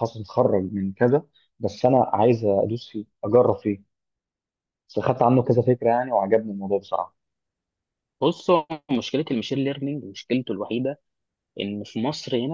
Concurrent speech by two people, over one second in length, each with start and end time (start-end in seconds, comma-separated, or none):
none